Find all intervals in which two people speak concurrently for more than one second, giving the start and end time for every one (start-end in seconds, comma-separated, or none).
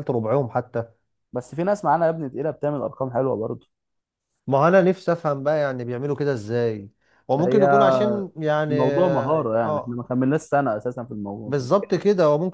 8.7-10.0